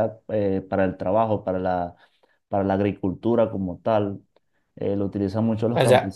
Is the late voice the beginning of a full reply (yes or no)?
yes